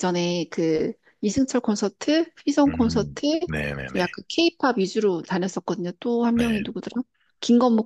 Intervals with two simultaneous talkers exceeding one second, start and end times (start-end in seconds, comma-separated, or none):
2.7-4.1